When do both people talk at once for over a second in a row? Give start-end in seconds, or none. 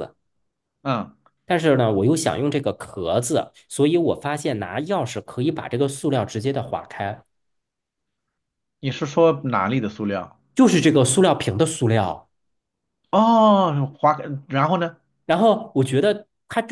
none